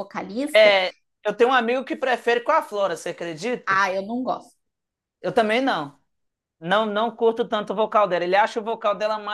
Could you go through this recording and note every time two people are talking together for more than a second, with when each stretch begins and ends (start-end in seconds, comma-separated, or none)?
none